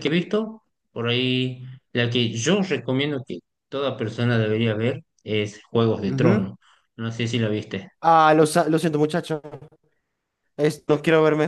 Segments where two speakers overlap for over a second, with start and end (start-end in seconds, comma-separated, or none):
none